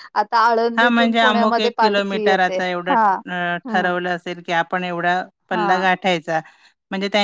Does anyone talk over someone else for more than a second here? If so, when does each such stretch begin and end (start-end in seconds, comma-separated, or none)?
0.8-3.9